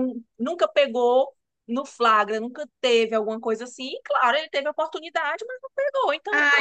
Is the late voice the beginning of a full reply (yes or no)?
yes